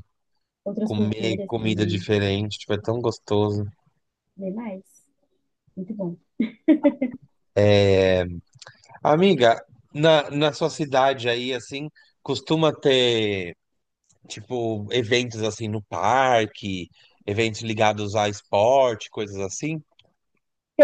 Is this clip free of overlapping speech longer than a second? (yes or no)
no